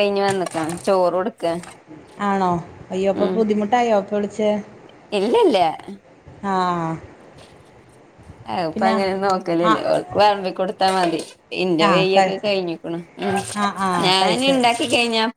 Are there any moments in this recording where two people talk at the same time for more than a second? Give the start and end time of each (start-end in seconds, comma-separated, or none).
none